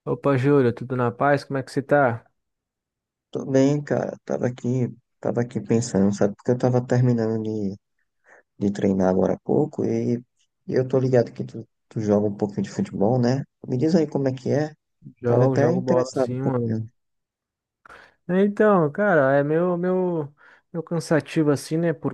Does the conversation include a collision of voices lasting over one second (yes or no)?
yes